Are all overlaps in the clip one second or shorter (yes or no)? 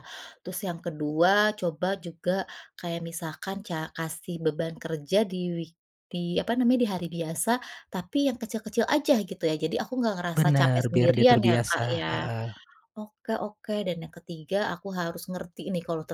no